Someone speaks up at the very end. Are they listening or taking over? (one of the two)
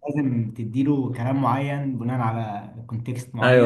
taking over